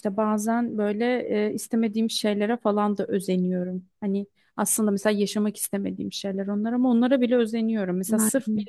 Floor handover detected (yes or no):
no